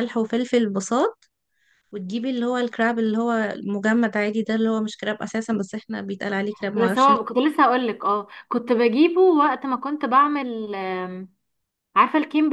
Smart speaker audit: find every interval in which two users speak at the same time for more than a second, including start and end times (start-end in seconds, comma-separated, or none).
none